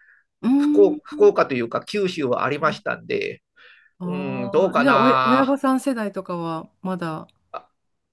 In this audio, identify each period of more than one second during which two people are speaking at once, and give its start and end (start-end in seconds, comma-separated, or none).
4.0-5.5